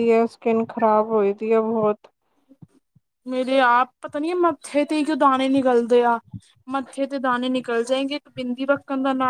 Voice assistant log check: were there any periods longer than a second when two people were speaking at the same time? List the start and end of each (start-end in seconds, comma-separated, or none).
none